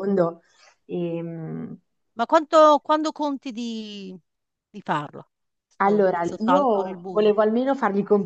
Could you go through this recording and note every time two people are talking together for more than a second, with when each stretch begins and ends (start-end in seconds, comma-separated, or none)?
5.8-7.3